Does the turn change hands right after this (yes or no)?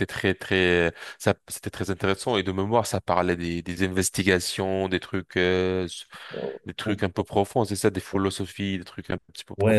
yes